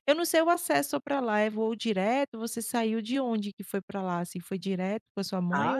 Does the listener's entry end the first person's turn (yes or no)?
yes